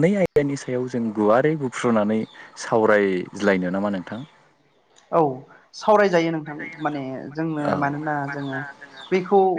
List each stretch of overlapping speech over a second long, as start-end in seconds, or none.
none